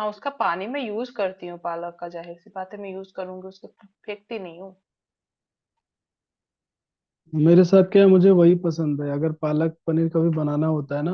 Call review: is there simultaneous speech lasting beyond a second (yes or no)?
no